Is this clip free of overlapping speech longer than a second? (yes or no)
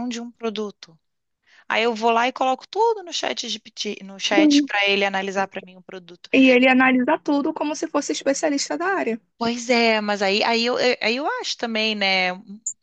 yes